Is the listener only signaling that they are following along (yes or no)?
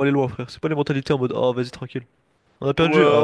no